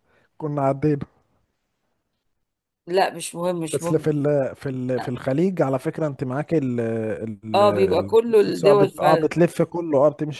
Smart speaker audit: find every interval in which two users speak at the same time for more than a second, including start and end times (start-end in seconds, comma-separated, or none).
7.5-9.3